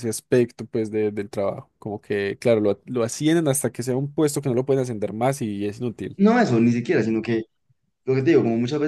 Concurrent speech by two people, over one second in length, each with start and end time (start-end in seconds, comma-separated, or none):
none